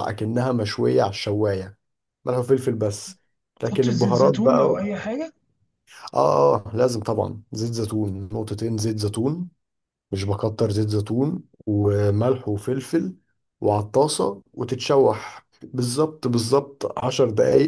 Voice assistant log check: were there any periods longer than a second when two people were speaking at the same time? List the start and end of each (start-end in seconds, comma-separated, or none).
3.6-4.9